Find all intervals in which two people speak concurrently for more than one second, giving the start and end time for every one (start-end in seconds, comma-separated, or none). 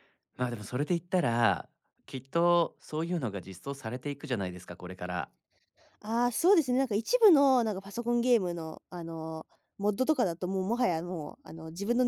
none